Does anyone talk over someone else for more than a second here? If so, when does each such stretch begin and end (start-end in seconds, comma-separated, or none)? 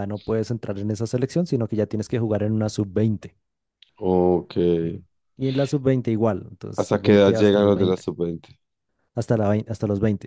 6.8-8.1